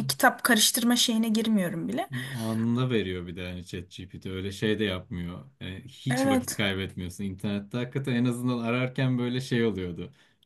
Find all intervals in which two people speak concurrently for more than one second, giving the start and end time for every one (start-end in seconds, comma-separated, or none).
none